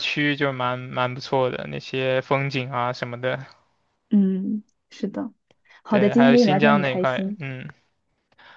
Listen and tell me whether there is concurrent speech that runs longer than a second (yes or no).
yes